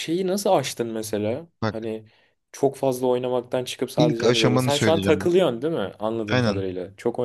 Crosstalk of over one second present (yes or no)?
yes